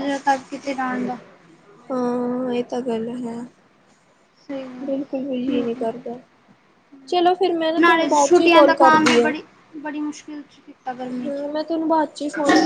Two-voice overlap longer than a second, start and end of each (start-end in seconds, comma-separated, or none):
7.8-9.3